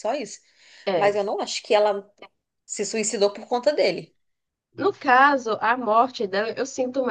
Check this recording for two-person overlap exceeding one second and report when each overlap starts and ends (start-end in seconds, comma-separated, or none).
none